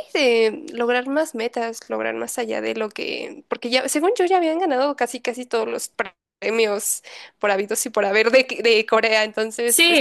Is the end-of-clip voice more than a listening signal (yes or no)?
yes